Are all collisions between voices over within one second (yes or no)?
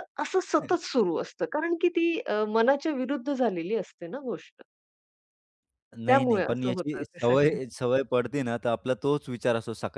no